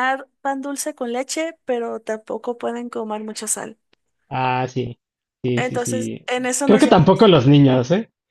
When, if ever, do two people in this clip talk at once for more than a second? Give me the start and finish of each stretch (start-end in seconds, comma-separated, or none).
5.5-7.3